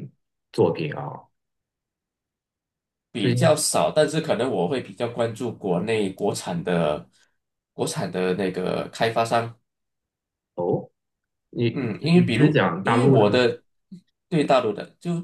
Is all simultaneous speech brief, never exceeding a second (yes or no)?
no